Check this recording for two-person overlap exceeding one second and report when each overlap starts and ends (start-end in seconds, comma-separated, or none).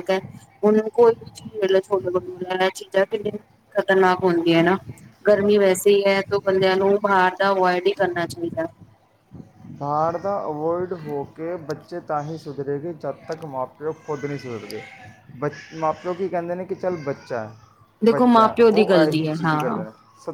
18.1-19.8